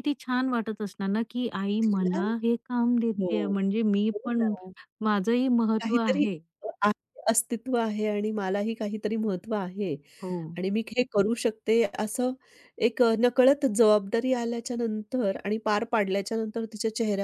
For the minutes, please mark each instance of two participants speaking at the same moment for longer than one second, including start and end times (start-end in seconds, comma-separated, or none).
none